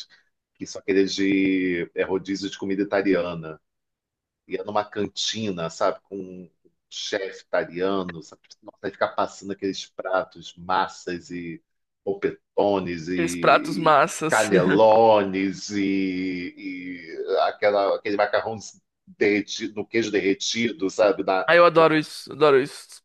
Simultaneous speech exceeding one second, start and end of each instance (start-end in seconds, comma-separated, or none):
13.1-14.5